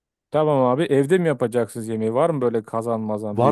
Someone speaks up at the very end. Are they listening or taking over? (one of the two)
taking over